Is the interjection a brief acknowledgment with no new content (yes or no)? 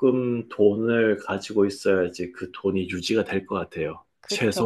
no